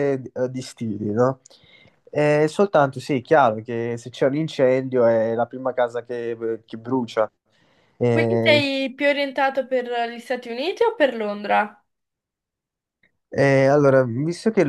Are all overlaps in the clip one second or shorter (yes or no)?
yes